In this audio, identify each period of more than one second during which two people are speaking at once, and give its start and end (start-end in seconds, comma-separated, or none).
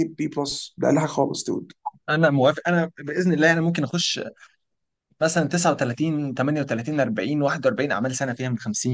none